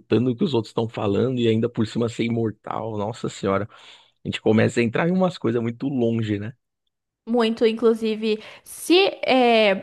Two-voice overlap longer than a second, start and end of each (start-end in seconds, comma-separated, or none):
none